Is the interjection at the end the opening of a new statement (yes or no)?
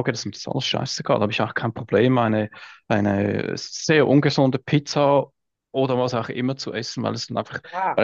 no